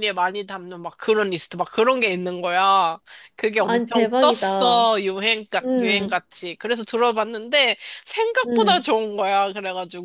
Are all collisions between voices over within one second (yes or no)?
no